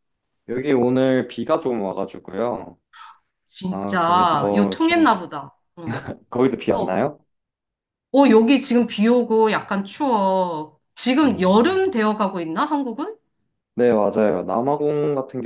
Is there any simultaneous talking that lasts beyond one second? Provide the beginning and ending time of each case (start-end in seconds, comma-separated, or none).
3.7-5.0